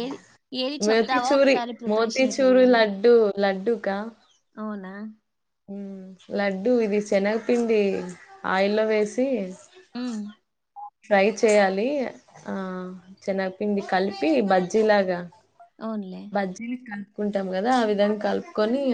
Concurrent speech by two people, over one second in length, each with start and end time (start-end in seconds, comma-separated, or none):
0.9-2.8